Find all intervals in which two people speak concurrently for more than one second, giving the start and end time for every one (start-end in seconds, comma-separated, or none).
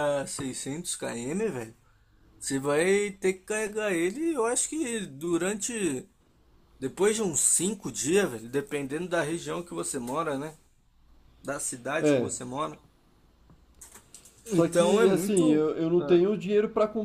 14.5-16.2